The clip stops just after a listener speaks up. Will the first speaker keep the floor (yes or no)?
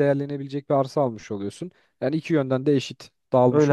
no